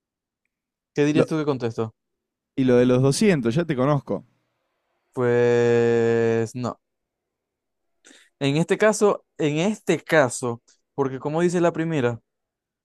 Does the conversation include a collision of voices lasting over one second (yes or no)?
no